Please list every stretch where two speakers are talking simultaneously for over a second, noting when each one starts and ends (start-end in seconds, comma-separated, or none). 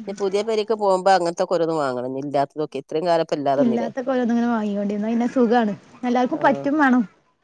none